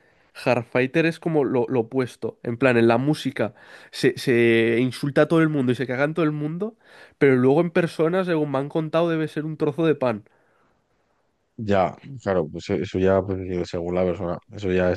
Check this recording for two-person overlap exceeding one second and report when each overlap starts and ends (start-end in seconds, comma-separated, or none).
none